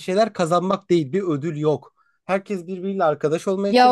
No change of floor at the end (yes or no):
no